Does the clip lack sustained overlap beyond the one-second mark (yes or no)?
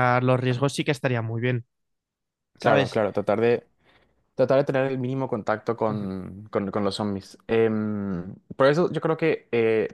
yes